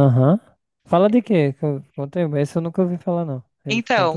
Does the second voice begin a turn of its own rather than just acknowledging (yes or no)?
yes